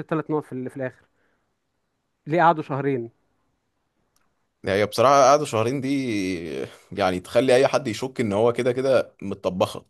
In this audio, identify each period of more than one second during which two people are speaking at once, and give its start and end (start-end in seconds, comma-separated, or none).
none